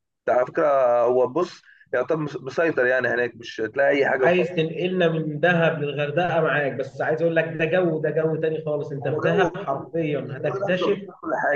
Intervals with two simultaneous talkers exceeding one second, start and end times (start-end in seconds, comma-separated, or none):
9.0-11.0